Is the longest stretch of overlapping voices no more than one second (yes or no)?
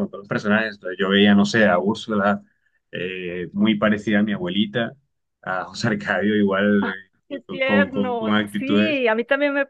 no